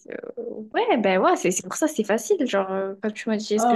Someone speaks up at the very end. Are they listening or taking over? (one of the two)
taking over